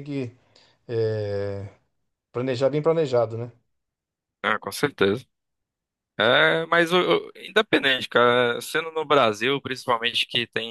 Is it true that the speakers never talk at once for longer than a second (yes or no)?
yes